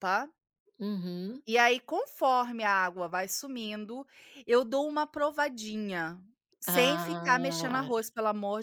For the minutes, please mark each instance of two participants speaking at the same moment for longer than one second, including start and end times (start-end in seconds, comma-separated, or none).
6.7-7.9